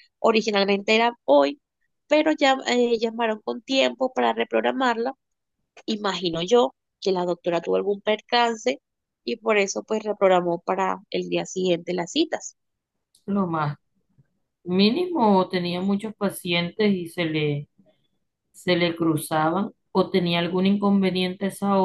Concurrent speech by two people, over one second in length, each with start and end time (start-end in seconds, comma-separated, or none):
none